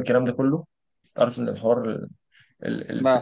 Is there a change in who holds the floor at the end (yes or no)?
no